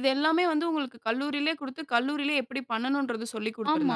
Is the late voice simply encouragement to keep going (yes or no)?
no